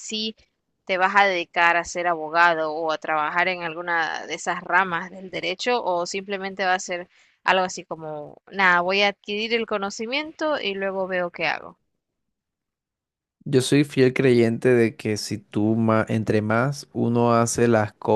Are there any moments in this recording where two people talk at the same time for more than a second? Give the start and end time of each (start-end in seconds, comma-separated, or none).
none